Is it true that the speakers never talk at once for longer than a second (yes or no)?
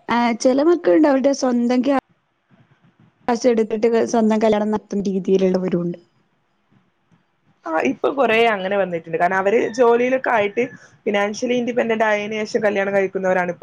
yes